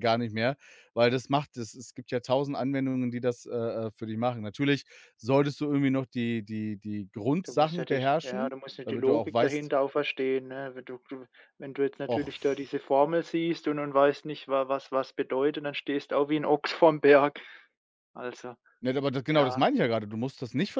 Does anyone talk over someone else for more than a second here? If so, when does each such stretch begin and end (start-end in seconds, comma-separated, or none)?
7.4-9.7